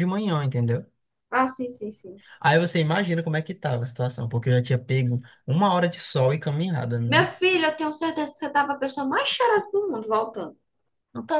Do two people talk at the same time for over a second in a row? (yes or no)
no